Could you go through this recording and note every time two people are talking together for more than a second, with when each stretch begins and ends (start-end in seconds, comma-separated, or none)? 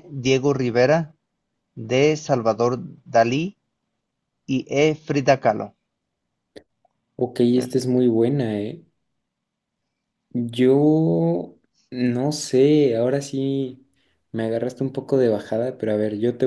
none